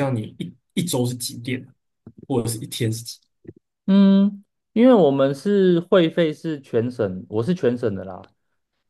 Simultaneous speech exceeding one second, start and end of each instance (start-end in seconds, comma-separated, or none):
none